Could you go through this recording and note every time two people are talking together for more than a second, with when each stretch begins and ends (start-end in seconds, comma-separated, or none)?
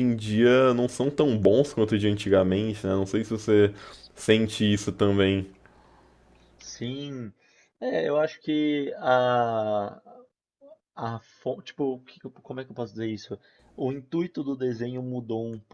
none